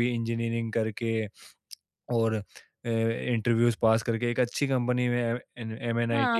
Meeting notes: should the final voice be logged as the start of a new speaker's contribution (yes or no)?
yes